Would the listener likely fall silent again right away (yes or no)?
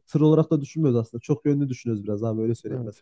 no